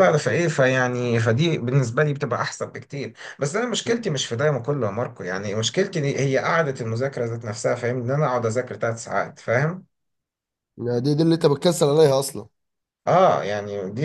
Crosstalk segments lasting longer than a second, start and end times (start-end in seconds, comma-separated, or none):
none